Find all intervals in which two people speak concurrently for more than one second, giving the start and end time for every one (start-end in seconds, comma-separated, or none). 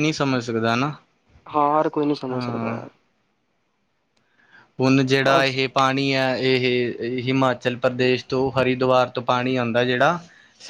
none